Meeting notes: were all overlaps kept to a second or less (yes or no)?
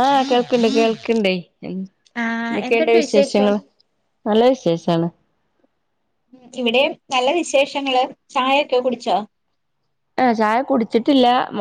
no